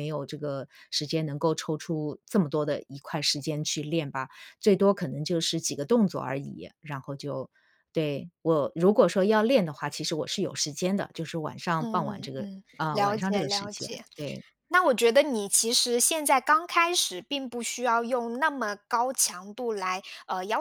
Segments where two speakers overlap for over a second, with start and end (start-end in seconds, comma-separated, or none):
11.8-14.0